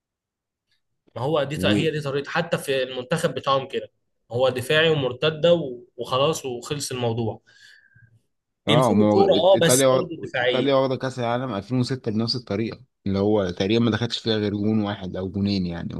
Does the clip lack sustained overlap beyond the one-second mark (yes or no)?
no